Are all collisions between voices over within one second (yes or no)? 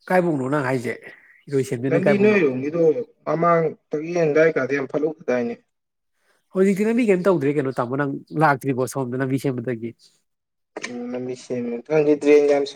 yes